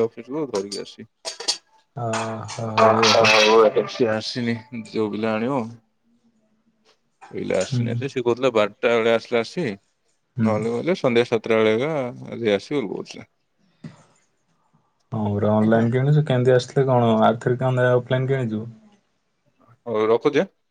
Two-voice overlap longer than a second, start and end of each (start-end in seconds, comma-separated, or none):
none